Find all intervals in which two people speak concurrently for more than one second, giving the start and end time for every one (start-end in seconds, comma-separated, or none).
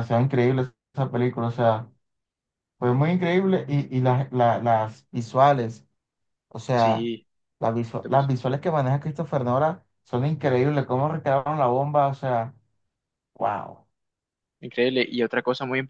none